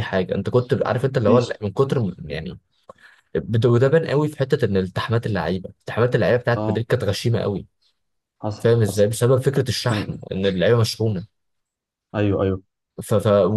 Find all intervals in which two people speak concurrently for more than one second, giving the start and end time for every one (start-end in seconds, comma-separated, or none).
none